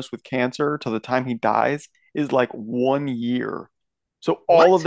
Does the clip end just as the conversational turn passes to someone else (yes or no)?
no